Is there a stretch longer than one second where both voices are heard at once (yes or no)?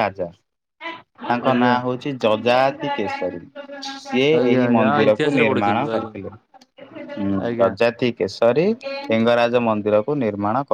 yes